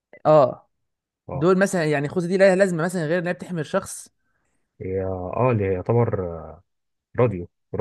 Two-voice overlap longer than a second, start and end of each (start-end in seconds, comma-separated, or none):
none